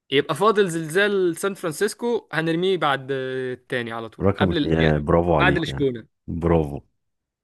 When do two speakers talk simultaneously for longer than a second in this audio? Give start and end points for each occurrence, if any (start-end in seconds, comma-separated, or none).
4.2-5.9